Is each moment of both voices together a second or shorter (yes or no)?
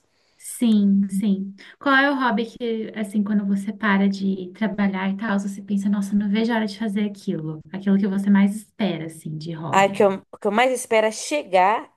yes